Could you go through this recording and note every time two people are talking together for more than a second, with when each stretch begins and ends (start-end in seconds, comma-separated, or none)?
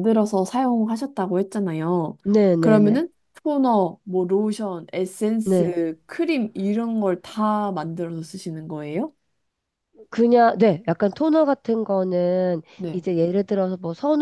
none